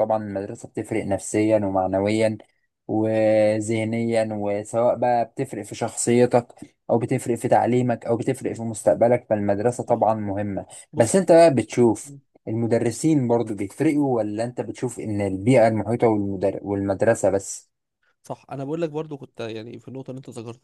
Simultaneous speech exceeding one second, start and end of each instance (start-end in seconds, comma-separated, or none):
none